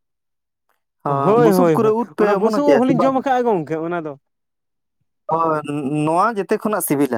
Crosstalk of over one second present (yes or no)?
yes